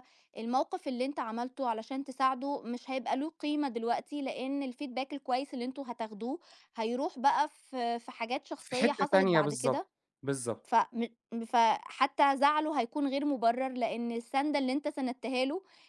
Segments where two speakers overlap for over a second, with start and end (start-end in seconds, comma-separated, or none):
8.6-9.8